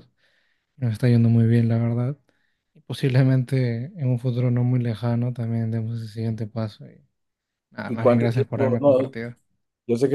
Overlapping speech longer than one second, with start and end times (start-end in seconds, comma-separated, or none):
7.9-9.1